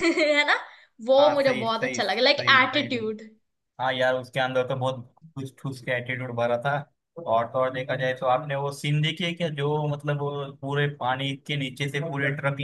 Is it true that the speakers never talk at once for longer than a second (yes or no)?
no